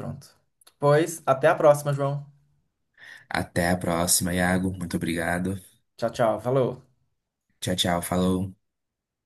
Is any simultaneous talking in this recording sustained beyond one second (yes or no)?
no